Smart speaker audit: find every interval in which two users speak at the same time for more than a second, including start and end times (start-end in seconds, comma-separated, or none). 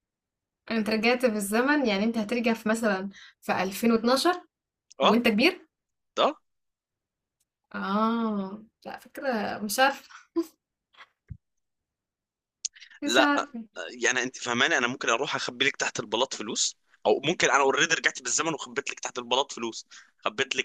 none